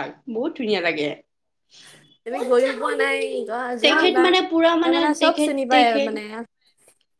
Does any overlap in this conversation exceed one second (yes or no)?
yes